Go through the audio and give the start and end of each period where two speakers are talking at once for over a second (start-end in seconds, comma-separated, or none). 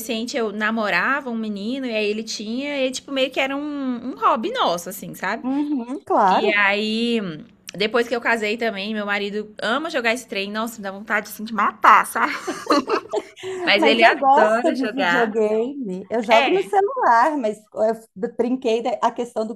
13.8-15.3